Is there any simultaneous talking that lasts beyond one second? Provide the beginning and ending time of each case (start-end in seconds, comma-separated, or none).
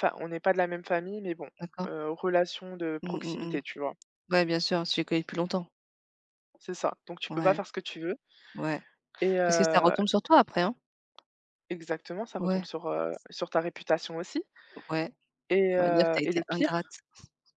15.8-17.0